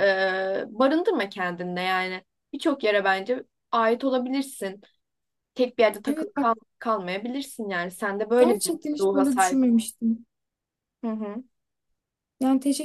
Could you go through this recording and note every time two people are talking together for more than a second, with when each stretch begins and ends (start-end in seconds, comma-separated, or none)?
8.4-9.6